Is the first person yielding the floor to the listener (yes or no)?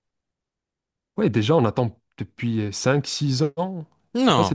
yes